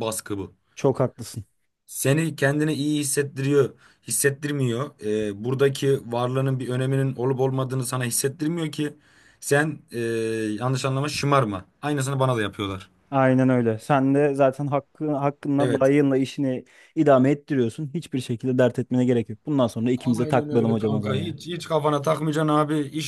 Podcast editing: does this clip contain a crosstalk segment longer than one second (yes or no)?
yes